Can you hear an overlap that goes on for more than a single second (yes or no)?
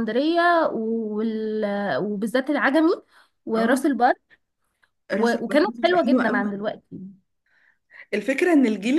yes